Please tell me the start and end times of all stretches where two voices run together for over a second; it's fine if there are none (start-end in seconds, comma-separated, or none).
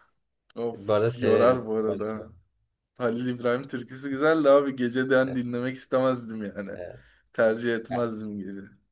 0.8-2.3